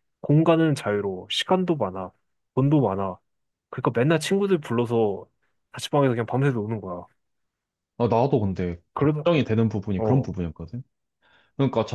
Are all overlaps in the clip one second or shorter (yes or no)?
yes